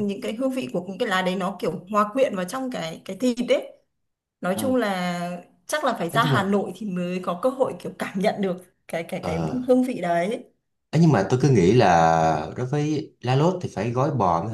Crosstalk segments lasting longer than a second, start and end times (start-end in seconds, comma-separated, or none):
none